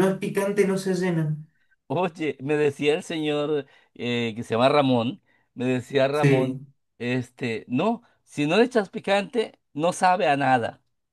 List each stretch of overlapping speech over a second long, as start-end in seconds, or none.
none